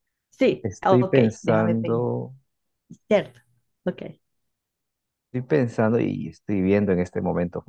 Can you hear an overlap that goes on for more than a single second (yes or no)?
yes